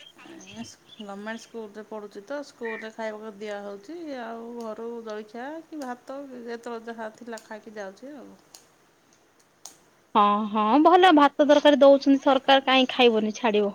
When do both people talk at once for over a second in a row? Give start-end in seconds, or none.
none